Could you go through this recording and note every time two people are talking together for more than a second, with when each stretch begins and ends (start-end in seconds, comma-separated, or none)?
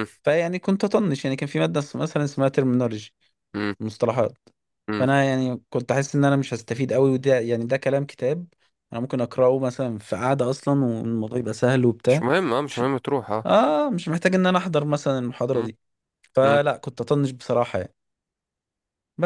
none